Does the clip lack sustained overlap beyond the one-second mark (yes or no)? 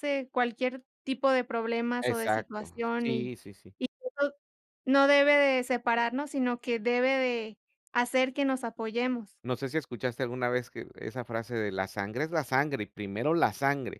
no